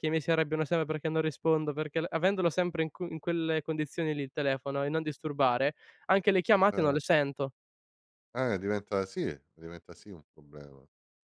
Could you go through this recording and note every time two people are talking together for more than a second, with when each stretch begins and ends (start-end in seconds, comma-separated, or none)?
none